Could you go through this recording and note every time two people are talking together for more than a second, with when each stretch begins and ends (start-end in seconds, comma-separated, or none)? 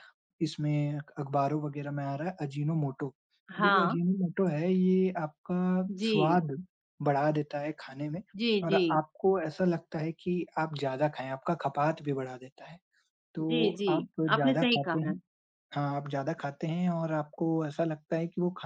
13.4-15.1